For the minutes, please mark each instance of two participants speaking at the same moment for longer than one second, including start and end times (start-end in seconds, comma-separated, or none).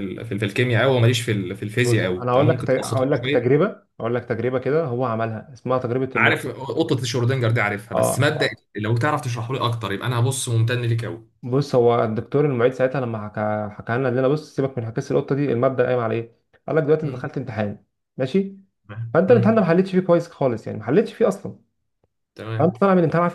1.8-3.6